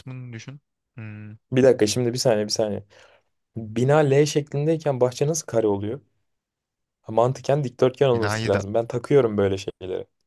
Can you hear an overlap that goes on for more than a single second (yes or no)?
no